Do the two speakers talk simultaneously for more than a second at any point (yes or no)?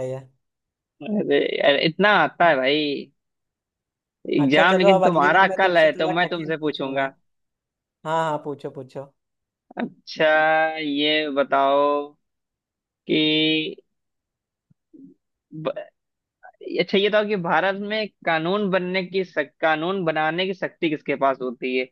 yes